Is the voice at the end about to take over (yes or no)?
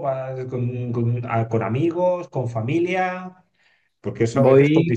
no